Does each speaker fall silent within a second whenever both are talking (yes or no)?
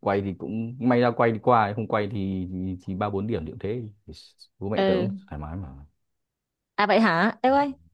yes